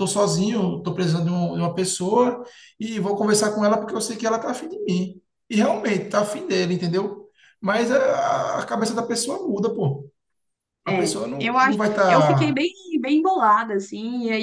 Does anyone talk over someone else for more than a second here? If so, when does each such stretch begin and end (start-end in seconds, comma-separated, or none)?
10.9-12.6